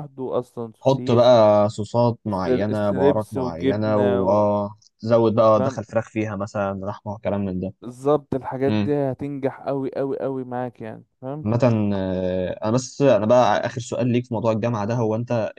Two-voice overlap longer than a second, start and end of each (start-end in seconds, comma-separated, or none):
2.2-4.5